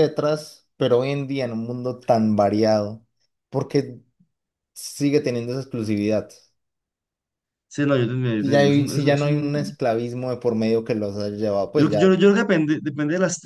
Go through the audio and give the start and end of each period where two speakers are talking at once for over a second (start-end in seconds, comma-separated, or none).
8.4-9.8